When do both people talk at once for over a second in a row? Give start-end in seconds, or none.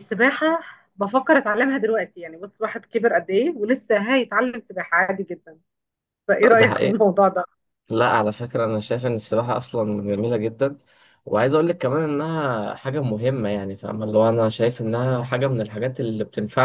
none